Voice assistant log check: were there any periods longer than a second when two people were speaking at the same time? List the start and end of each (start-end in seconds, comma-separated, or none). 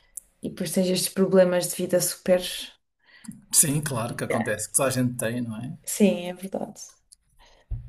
none